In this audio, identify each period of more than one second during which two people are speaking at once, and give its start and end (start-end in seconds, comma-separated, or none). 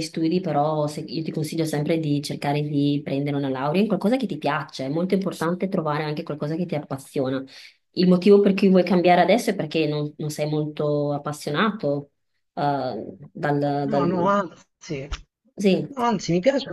none